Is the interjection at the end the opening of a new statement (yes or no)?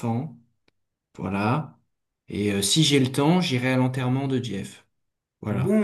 yes